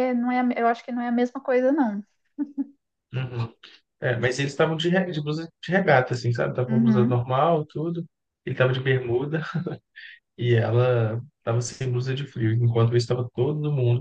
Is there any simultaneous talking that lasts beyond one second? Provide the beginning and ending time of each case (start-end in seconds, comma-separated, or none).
none